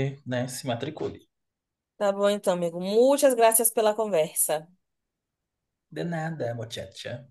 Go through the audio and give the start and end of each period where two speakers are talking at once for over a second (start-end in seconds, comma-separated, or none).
none